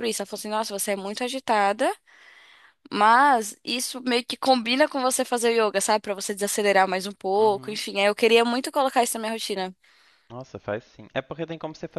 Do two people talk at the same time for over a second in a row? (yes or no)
no